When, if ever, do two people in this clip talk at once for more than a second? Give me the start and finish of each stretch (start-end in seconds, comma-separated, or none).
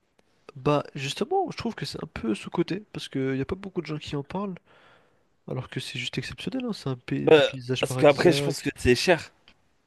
7.2-8.7